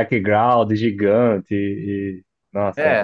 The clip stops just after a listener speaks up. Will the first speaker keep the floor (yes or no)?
no